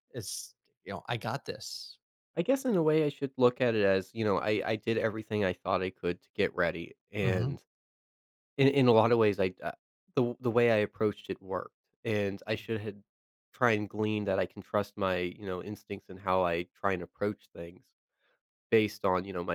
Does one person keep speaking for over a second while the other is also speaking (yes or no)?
no